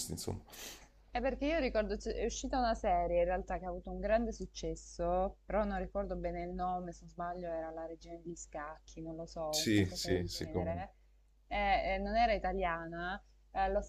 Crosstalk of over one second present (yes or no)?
yes